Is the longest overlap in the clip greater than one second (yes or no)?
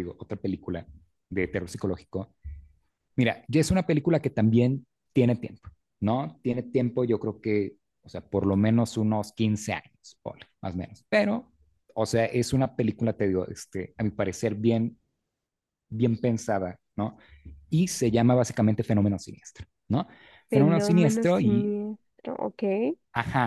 yes